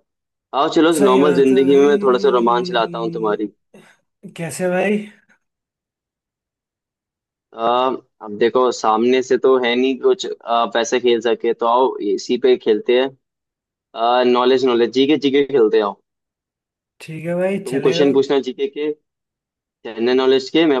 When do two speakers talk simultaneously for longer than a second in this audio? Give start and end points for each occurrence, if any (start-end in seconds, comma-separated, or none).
1.0-2.6